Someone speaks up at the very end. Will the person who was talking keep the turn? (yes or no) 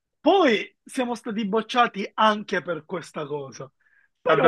no